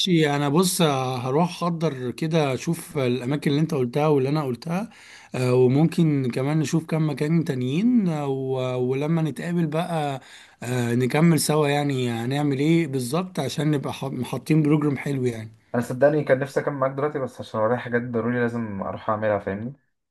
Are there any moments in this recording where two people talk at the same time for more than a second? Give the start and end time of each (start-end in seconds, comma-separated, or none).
none